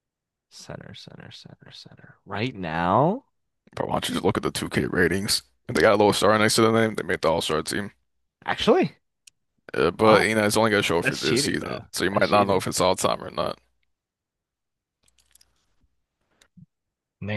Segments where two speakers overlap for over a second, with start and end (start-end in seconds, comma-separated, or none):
11.0-12.7